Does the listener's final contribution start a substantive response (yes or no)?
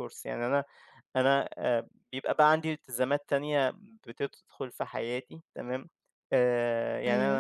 no